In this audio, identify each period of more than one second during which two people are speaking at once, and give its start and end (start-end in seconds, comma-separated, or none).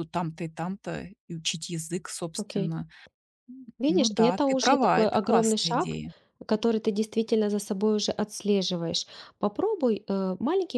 3.9-6.0